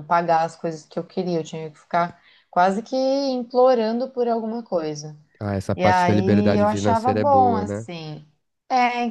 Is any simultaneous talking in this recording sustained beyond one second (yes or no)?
yes